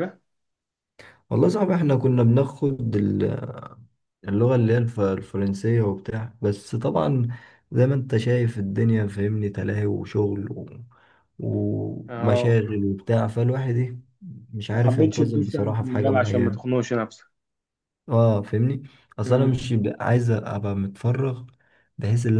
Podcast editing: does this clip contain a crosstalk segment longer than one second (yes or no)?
yes